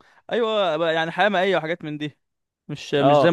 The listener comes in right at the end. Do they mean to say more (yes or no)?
yes